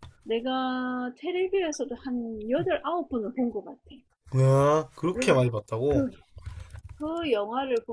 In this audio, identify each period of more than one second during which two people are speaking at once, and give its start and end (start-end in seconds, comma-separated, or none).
none